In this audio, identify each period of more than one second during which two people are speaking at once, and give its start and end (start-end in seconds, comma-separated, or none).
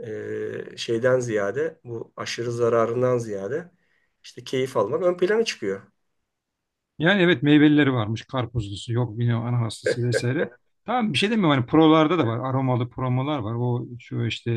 none